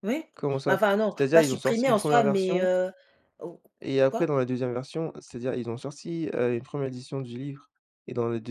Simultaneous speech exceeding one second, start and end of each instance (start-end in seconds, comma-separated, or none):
0.7-2.7